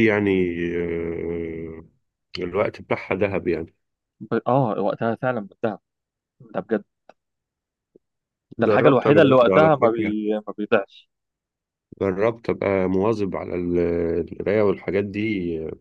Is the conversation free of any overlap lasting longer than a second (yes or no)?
no